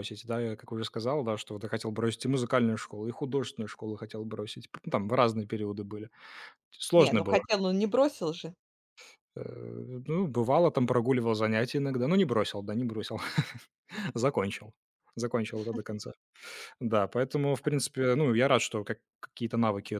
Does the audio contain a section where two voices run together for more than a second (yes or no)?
no